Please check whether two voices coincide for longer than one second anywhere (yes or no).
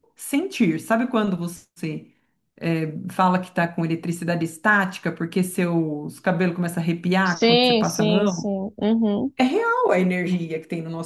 yes